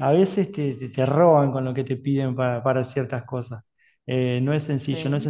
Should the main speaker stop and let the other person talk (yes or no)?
no